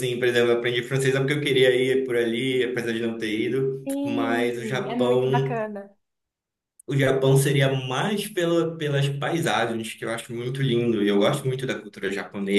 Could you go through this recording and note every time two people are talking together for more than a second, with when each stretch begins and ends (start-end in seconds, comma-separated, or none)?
3.9-5.5